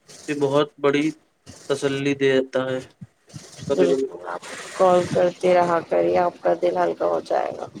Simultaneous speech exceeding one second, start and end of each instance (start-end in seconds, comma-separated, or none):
none